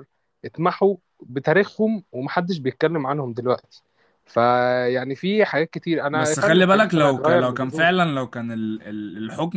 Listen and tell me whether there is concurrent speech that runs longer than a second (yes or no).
yes